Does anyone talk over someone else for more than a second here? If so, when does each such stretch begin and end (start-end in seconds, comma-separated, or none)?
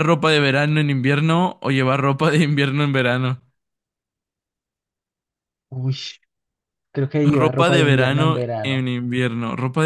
7.2-8.8